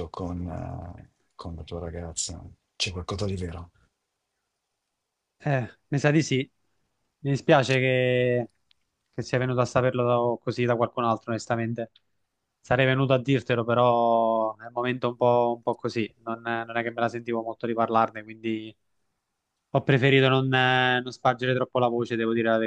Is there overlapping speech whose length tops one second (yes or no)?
no